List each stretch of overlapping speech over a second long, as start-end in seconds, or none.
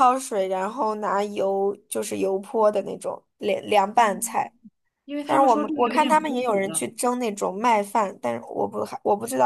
5.2-6.9